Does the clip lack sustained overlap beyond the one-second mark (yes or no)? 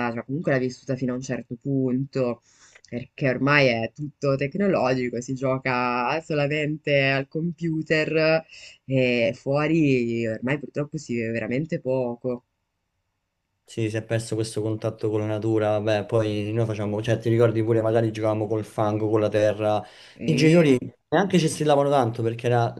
yes